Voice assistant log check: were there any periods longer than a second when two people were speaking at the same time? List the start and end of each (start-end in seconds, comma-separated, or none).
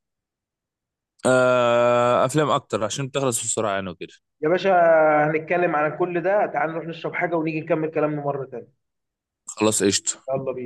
none